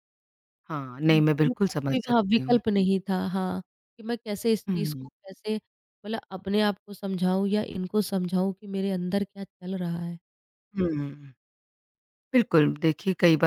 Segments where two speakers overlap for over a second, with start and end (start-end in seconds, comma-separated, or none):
1.1-2.6